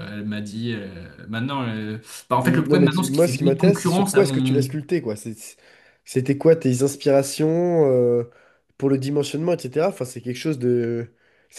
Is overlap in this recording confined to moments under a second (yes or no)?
no